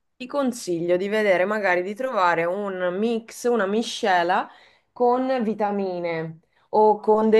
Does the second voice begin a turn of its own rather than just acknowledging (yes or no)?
no